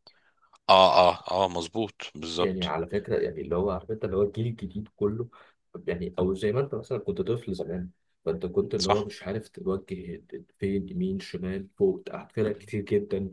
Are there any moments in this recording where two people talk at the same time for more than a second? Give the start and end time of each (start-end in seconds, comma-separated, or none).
none